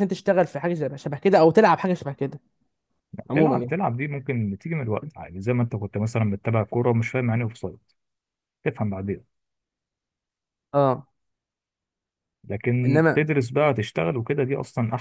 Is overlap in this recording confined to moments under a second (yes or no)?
yes